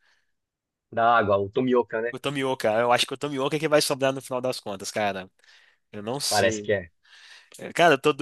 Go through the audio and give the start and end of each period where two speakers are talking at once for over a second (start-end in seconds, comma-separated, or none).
none